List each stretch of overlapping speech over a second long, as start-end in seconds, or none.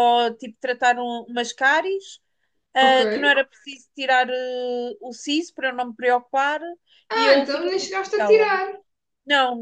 7.1-8.5